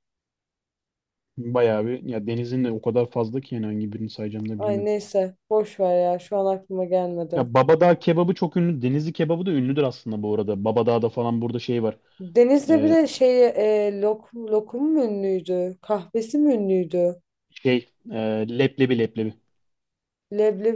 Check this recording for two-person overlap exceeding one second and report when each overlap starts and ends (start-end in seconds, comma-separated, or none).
none